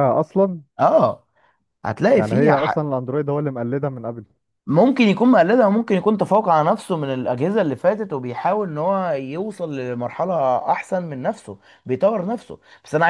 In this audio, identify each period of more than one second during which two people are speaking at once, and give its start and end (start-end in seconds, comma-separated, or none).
none